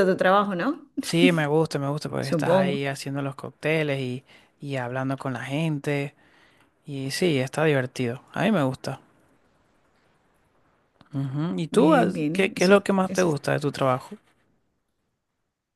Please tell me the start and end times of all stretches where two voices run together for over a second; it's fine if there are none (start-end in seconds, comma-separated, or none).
11.7-13.4